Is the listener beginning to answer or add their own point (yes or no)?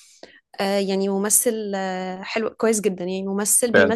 no